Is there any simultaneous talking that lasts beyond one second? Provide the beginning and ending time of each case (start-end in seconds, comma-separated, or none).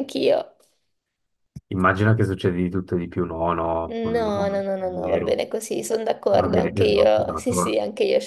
3.9-5.4, 6.3-7.8